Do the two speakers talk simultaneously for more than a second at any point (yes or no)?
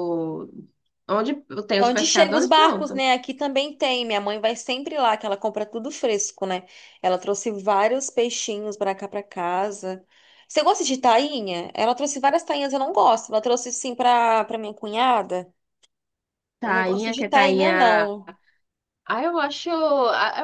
yes